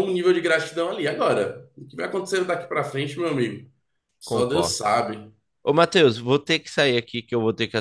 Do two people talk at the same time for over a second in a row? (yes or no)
no